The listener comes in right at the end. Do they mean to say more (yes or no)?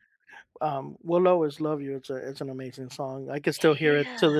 no